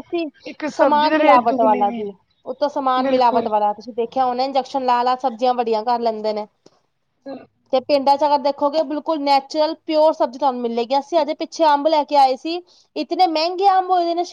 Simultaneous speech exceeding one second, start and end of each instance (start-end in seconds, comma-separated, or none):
0.8-2.0